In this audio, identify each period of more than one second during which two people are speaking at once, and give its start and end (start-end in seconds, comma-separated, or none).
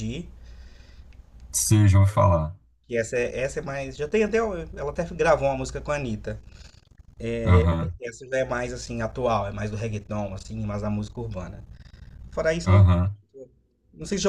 none